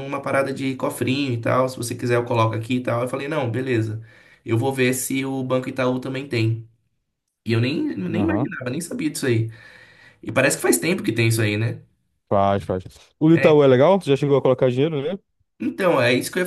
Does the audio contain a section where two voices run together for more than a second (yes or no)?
no